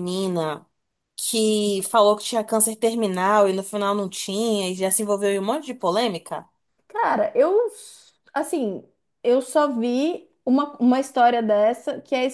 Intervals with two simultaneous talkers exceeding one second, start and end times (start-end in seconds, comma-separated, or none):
none